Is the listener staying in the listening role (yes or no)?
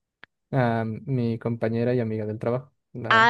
no